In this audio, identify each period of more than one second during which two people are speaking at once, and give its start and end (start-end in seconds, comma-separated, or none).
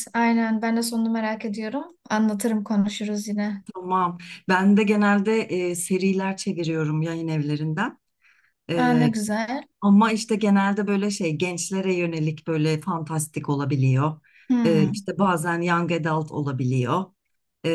none